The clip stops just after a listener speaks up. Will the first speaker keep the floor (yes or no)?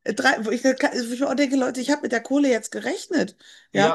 no